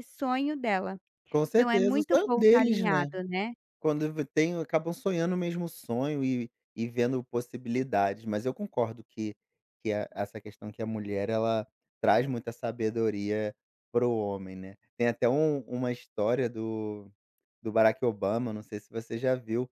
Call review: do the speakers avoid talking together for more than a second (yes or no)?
no